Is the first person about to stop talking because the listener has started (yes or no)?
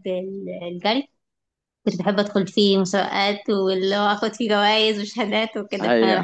no